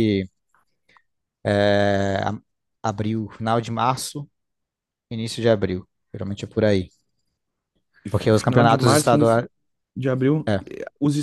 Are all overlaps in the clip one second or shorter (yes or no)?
no